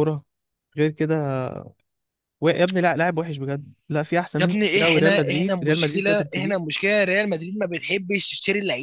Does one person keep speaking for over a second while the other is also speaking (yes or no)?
yes